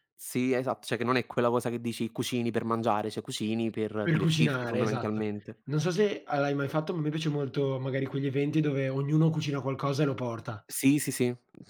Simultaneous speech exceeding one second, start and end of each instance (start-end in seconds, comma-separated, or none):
4.0-5.3